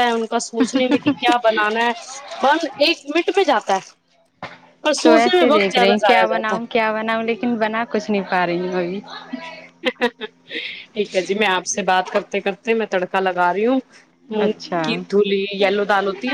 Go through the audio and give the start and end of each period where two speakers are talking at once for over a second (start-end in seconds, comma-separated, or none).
5.0-6.7